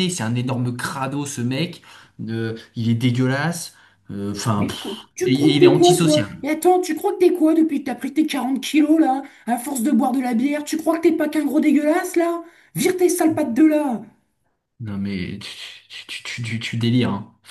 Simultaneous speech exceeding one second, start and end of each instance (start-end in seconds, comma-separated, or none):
4.6-6.3